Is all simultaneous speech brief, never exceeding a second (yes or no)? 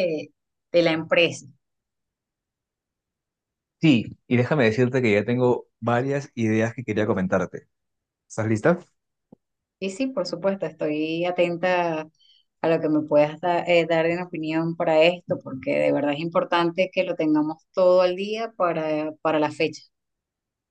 yes